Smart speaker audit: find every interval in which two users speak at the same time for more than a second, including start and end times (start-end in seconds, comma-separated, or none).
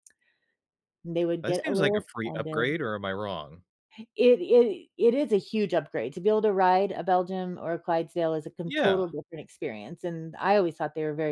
1.4-2.8